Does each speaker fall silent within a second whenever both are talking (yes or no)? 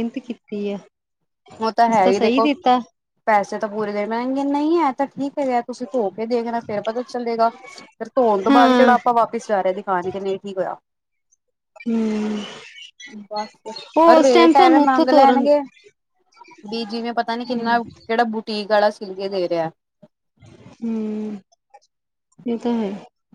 no